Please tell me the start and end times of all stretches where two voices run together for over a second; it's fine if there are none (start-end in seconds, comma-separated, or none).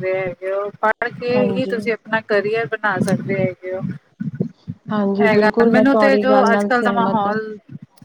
5.2-7.3